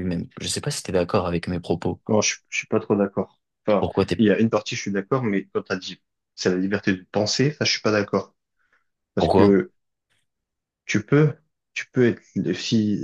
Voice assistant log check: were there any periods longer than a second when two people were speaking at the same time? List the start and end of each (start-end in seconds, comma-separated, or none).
none